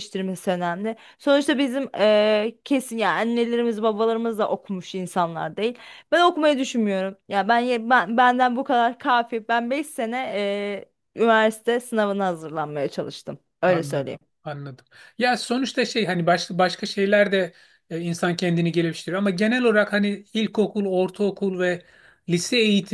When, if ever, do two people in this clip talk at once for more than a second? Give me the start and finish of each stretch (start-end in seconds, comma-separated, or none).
none